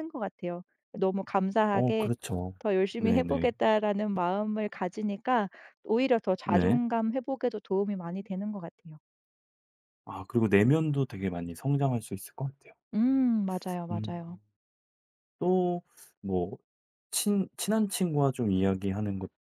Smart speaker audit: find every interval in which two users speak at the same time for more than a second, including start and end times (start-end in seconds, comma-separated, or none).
none